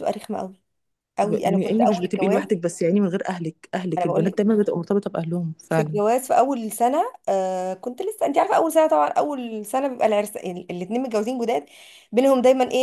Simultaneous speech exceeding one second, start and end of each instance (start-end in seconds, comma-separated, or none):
1.2-2.5